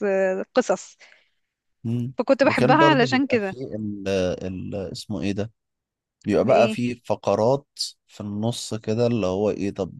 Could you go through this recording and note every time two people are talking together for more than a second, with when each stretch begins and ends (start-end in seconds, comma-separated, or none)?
2.2-3.6